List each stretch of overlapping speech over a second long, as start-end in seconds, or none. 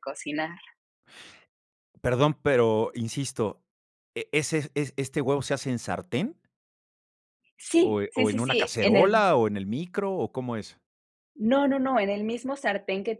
7.8-9.2